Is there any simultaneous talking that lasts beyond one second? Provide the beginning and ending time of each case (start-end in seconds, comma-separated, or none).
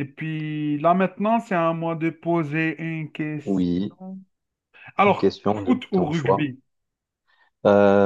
5.0-6.5